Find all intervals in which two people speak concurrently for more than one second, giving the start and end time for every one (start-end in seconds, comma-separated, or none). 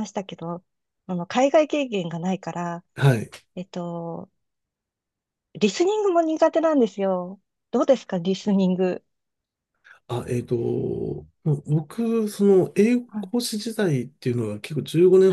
none